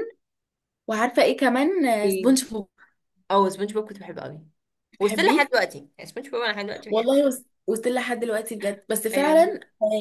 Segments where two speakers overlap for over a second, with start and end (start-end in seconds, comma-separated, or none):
none